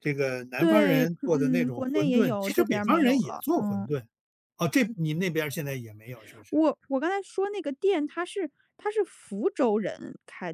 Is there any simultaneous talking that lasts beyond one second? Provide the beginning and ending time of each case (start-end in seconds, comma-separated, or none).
0.6-3.9